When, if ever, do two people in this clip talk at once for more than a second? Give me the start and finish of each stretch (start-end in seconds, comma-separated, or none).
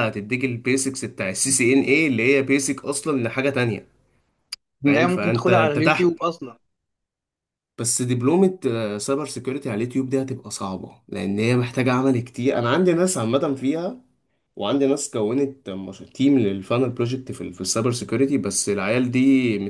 4.8-6.2